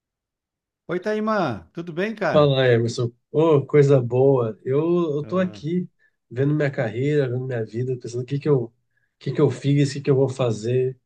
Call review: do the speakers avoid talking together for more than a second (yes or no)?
yes